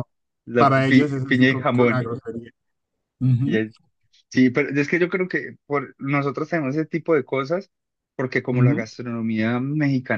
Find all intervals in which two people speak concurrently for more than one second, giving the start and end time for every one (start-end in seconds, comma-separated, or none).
0.6-2.1